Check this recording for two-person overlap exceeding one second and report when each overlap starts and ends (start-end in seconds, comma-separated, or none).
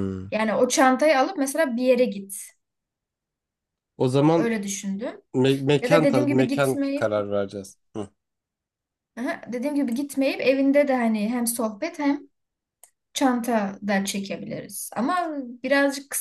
5.8-7.1